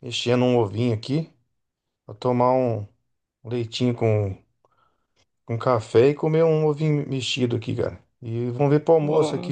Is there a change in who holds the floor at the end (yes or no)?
no